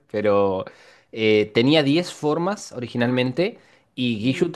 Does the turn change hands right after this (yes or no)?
no